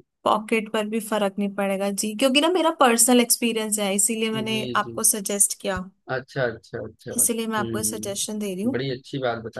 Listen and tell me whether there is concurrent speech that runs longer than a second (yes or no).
yes